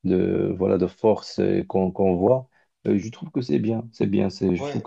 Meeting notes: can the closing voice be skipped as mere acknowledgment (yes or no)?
no